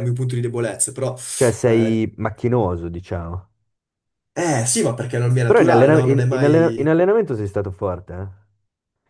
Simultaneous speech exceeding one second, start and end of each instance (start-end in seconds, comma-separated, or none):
5.5-7.0